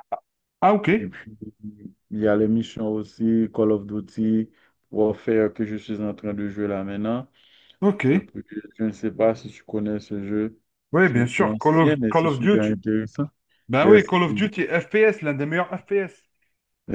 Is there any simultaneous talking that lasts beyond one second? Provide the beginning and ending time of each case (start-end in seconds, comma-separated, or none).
11.0-12.8